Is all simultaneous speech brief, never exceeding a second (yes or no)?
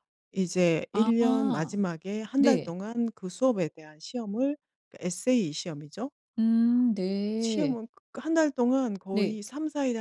yes